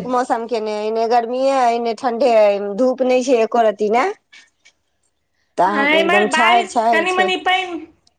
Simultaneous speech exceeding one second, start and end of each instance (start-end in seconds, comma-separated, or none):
5.7-7.3